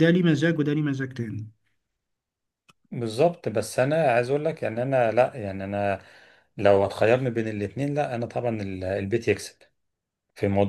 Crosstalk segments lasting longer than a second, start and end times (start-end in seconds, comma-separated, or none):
none